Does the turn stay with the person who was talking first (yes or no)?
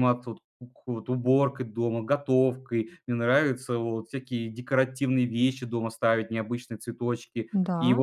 yes